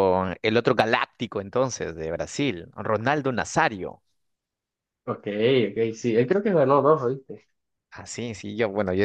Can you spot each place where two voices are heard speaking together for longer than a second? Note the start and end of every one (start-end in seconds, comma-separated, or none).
none